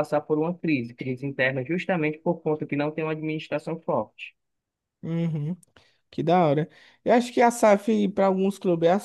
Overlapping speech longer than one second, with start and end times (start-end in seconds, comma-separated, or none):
none